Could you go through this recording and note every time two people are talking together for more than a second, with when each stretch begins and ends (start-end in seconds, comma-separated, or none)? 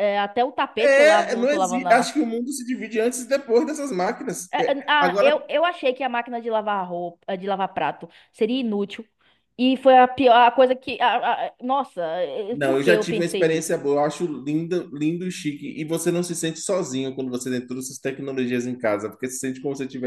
0.8-2.2, 12.5-13.8